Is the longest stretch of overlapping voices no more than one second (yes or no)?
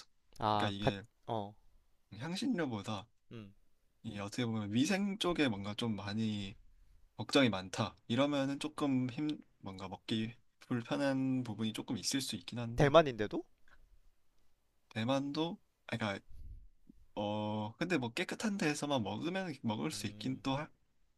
yes